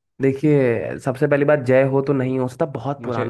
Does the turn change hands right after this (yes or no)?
no